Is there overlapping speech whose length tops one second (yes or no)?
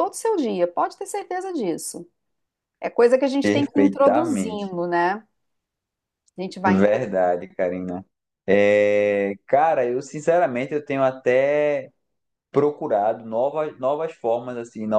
yes